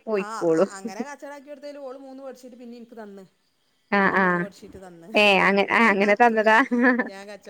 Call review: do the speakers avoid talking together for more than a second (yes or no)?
yes